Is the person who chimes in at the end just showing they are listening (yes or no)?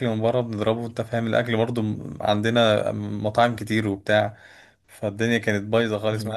yes